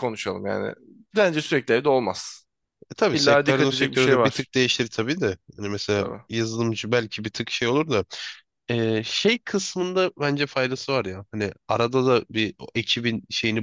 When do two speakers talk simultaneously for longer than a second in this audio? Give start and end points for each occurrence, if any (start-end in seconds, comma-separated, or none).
3.1-4.5